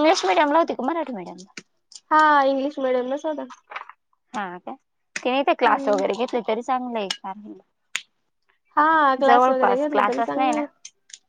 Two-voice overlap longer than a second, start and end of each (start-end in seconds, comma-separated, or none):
9.2-10.6